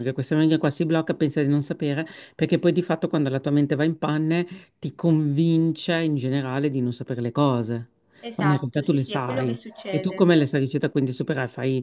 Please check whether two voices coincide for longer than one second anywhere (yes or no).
yes